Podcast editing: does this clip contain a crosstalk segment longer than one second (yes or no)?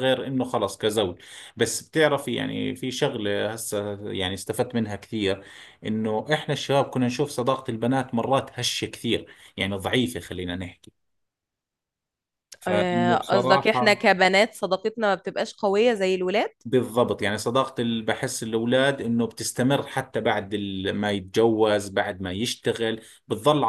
yes